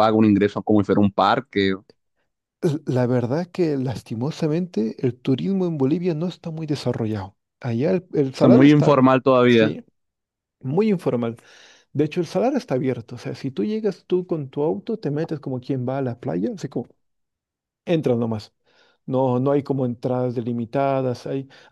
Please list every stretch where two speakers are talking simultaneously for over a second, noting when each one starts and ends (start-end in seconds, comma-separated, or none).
8.3-9.7